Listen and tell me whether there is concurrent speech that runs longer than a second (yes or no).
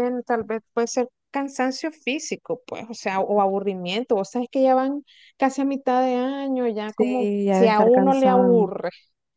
yes